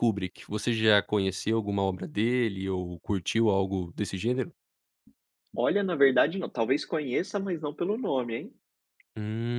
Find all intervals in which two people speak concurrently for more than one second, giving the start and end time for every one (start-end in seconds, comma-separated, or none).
none